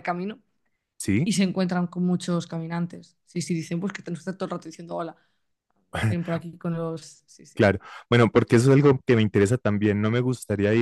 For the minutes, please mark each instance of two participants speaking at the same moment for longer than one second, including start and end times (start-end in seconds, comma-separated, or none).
none